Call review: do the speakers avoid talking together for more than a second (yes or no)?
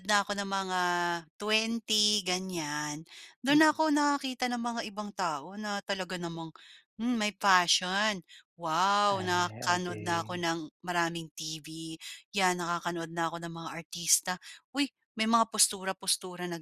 no